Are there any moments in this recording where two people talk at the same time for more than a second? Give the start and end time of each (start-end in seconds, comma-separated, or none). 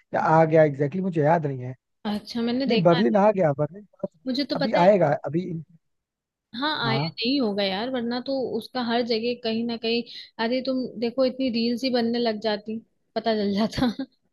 none